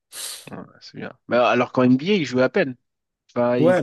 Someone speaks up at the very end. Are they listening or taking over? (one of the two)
taking over